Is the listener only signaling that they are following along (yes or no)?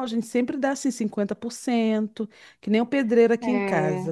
yes